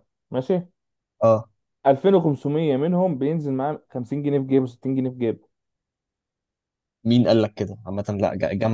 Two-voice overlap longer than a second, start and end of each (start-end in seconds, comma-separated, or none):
none